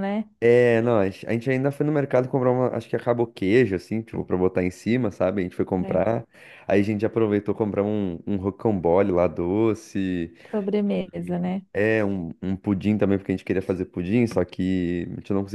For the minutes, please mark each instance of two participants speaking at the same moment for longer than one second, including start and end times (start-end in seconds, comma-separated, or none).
none